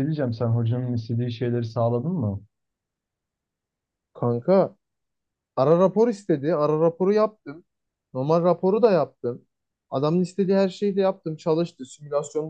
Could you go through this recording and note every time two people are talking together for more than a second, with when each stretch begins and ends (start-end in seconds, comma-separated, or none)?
none